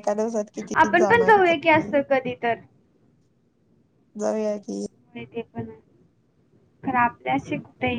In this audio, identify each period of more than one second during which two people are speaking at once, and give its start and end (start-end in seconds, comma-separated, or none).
0.7-2.0